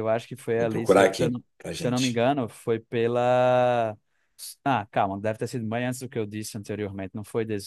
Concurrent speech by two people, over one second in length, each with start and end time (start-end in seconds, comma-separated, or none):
0.5-2.2